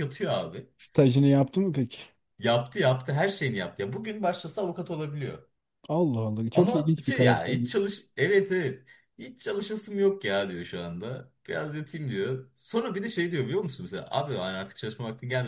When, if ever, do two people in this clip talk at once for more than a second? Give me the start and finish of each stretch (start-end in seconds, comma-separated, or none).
6.5-7.9